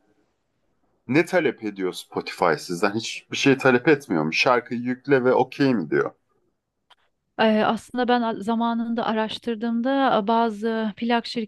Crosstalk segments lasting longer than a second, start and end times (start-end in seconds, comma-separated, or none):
none